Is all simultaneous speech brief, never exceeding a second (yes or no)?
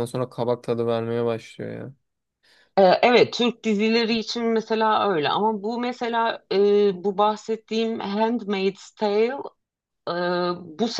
yes